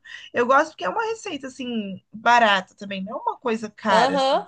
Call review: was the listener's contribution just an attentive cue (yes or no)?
no